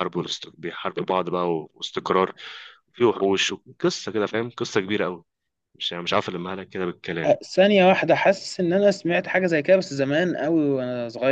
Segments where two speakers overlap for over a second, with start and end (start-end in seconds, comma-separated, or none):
none